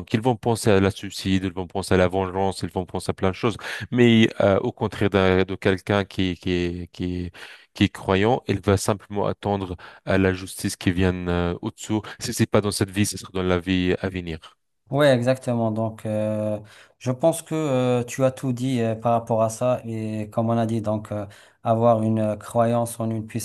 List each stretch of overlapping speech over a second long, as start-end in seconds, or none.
none